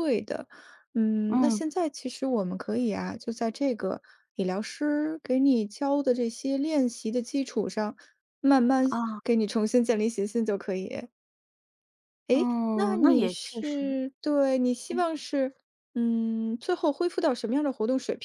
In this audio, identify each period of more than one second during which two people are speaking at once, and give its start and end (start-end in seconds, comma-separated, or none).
12.7-14.0